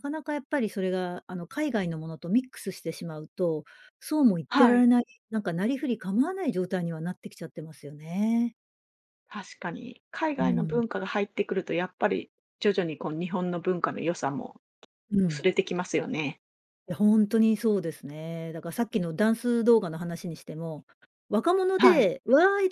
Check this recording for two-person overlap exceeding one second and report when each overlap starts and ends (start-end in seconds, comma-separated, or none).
none